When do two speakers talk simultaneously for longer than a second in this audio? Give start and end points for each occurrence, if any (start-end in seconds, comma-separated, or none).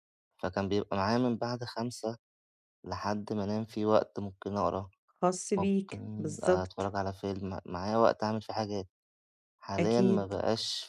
5.6-6.9